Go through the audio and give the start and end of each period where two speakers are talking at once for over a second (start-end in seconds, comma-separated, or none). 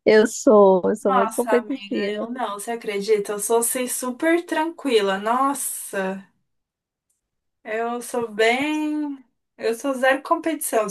1.1-2.3